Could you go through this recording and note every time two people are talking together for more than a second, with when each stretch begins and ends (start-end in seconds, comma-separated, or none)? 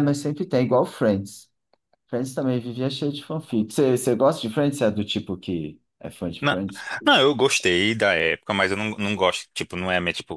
none